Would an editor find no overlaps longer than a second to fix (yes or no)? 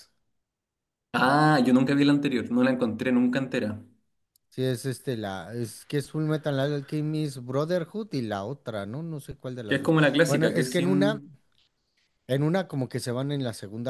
no